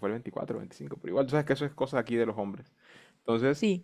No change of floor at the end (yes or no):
yes